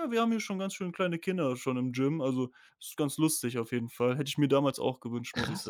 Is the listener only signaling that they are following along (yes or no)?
no